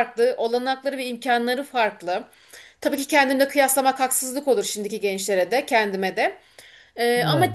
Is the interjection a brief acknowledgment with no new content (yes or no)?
yes